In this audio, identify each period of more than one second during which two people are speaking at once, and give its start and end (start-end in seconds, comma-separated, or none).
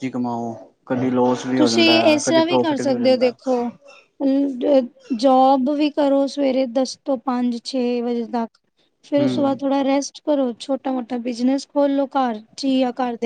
1.6-3.4